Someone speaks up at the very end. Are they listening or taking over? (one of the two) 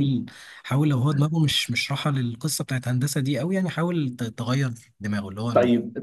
taking over